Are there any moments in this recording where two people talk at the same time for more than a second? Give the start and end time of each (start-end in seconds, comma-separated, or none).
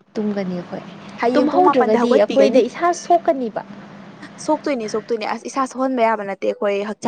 1.3-2.6